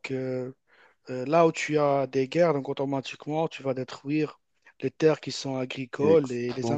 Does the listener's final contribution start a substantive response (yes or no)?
no